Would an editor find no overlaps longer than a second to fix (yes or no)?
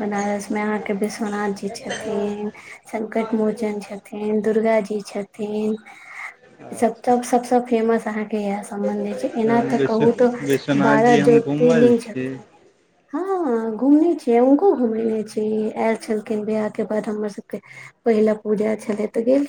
no